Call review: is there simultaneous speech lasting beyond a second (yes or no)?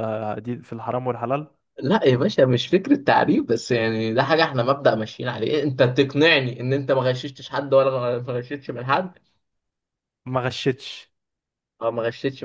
no